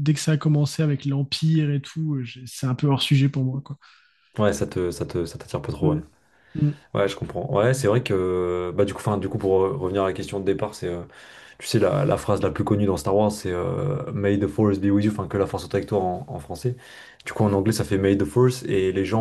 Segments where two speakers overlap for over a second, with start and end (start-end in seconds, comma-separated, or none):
none